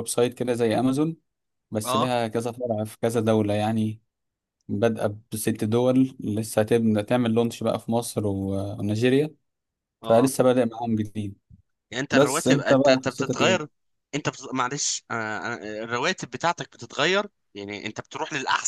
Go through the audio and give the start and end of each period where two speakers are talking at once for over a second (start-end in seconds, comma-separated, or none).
12.1-13.7